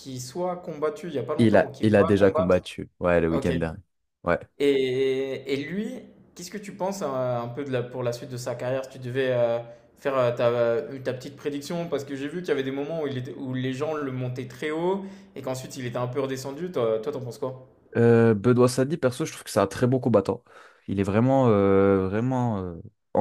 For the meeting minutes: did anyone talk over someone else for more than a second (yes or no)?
yes